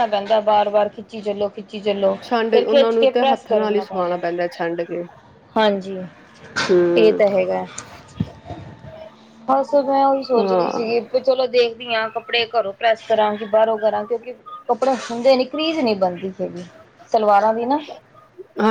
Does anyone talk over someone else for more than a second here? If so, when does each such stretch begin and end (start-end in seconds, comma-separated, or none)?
2.5-4.2